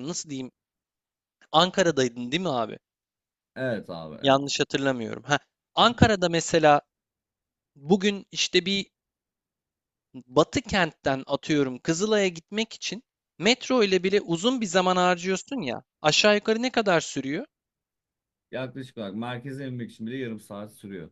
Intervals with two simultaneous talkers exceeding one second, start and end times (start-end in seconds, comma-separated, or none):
none